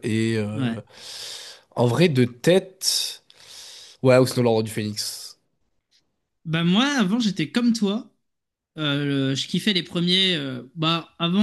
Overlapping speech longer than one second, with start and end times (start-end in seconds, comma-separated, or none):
none